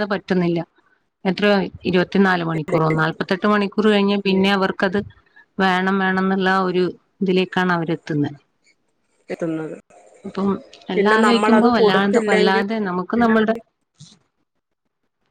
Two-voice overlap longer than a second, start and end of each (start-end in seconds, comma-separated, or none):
10.9-12.6